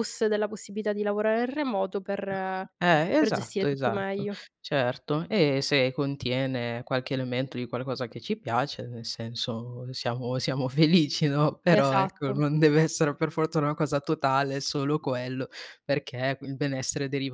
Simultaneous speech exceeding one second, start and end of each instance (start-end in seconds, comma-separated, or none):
3.2-4.4